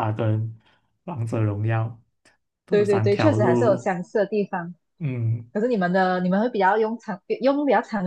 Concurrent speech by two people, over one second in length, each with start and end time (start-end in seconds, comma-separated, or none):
2.7-3.9